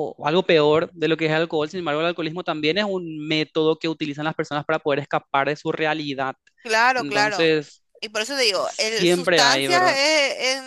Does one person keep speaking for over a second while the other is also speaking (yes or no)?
yes